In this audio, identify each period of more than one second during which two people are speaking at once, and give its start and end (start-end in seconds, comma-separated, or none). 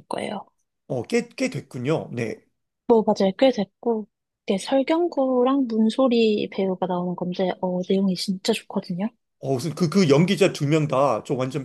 none